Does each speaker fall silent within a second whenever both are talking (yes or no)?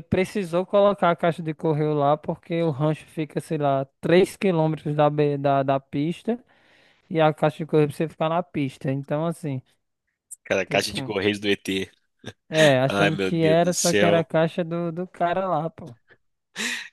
no